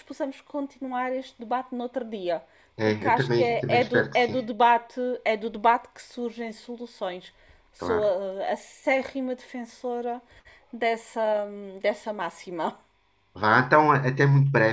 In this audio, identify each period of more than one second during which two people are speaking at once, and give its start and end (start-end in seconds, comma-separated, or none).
2.8-4.4